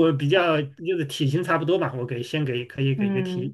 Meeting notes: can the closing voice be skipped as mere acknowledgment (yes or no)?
no